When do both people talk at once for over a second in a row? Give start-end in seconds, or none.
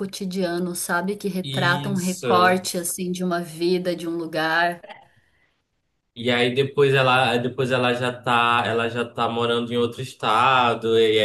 1.4-2.6